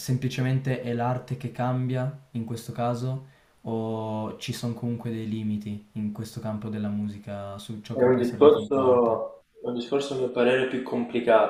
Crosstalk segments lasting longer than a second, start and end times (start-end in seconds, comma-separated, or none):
7.9-9.4